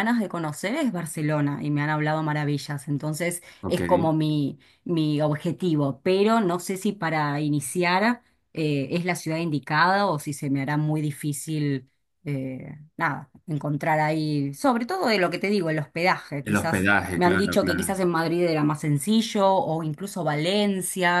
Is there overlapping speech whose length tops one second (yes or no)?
yes